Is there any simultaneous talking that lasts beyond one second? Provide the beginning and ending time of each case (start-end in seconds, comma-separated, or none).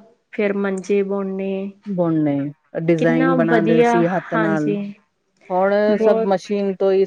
3.0-4.8